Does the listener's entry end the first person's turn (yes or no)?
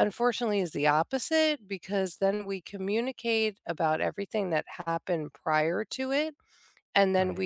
no